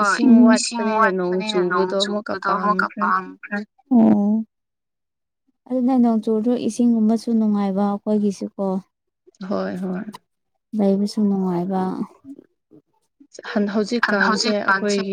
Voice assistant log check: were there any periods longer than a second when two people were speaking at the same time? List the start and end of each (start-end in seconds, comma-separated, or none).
0.6-3.0